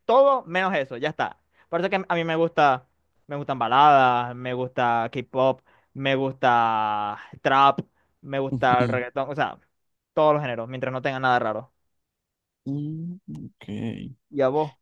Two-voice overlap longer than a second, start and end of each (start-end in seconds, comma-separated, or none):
none